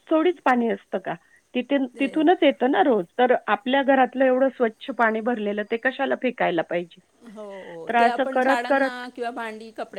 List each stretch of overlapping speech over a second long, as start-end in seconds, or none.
none